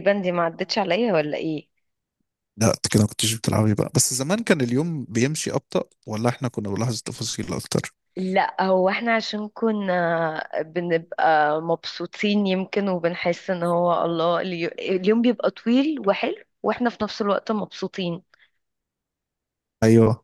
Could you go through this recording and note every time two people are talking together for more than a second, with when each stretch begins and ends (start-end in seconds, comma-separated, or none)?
none